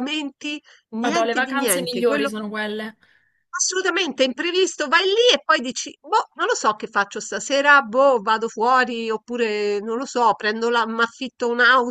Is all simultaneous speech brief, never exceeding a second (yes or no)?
no